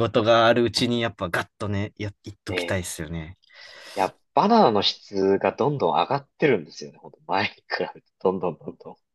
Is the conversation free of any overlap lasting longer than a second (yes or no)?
yes